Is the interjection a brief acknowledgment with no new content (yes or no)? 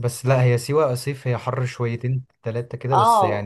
no